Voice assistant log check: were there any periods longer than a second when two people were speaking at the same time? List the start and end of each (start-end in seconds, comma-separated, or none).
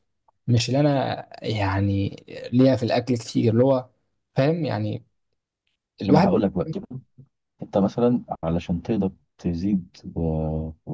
none